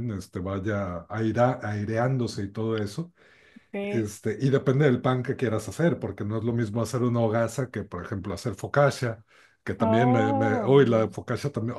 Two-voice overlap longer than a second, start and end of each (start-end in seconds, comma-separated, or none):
9.8-11.1